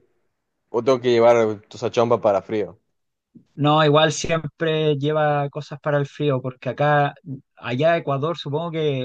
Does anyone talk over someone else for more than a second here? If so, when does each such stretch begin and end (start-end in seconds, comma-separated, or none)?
none